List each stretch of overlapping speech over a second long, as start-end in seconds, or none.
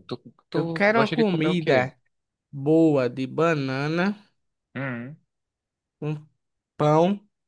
0.5-1.9